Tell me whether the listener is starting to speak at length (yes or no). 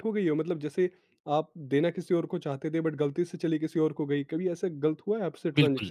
yes